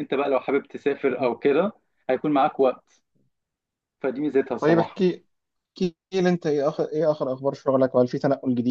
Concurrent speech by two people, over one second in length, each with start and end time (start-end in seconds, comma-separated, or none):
none